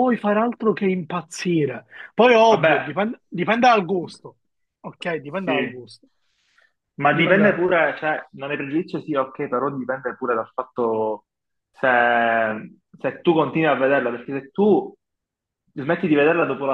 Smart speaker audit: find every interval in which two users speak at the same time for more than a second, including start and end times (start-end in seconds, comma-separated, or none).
none